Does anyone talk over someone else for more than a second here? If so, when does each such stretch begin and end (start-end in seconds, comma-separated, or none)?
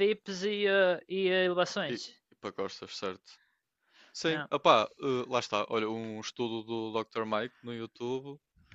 none